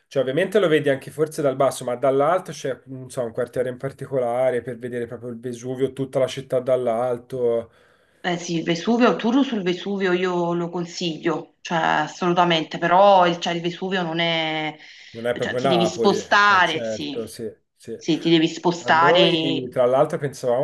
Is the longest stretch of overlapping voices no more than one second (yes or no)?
no